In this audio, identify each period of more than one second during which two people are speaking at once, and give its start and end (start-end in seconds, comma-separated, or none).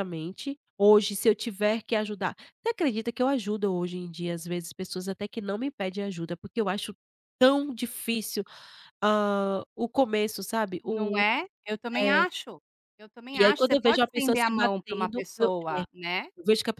13.4-15.8